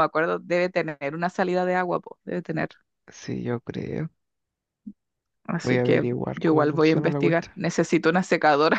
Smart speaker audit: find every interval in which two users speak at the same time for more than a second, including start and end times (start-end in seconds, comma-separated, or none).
5.6-7.6